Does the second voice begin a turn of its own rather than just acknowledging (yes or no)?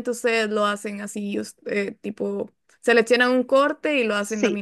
yes